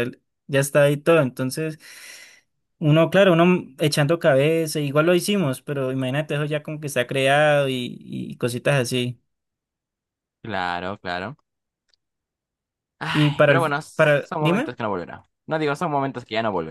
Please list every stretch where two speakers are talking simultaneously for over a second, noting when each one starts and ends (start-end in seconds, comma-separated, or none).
13.1-14.7